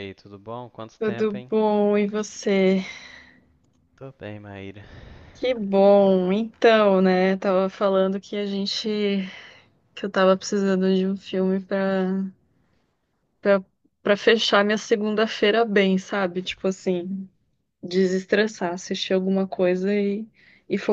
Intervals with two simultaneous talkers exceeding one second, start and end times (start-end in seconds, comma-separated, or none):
none